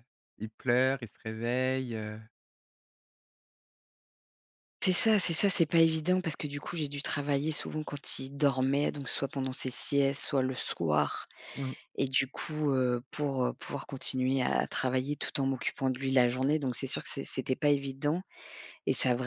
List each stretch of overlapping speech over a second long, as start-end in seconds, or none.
none